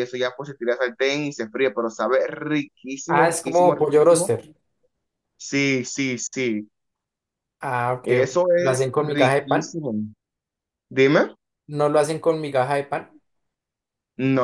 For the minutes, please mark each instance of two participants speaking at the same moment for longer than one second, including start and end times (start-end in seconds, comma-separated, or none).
3.1-4.3, 8.0-9.8